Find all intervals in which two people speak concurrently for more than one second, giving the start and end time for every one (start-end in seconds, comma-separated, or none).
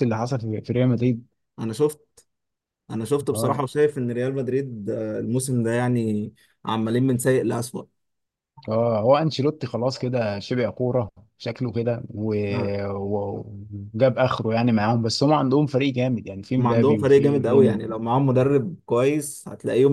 16.6-17.8